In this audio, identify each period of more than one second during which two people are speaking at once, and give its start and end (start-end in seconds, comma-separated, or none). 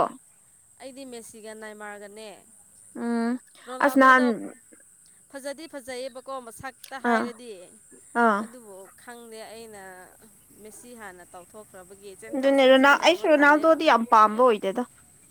12.3-13.8